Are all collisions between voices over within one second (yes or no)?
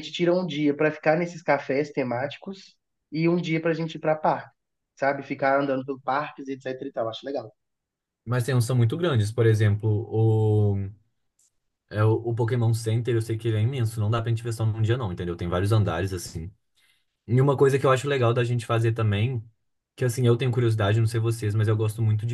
yes